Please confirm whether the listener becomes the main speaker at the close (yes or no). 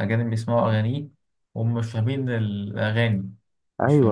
no